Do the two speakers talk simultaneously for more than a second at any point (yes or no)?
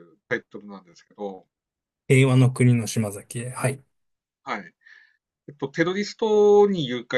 no